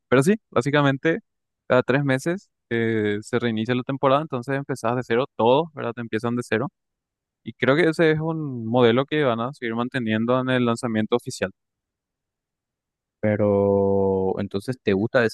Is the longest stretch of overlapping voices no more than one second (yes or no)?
yes